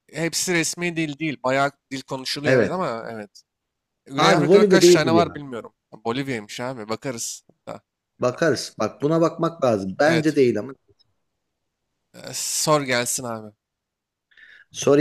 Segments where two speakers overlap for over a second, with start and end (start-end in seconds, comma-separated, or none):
4.2-5.4